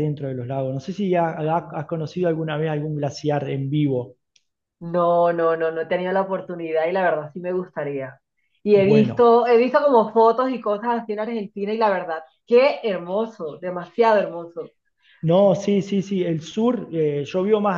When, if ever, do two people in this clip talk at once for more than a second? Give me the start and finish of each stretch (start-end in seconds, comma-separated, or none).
none